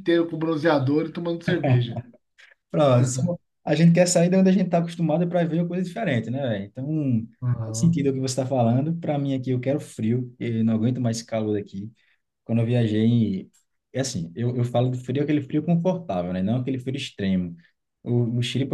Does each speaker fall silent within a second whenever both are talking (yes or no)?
yes